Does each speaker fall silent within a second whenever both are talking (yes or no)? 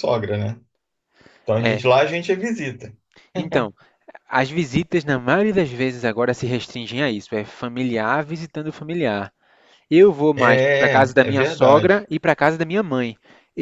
no